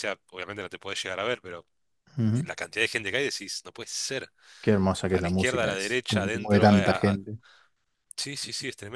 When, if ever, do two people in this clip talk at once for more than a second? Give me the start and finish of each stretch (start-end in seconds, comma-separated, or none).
5.1-7.2